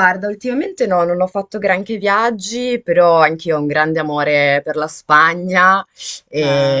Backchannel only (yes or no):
yes